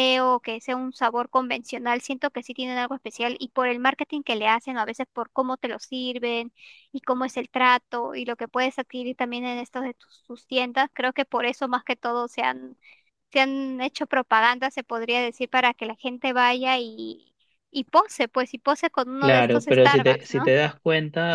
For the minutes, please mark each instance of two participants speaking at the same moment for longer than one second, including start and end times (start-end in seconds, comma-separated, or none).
19.2-20.5